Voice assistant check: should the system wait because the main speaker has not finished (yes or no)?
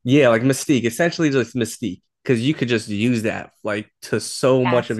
yes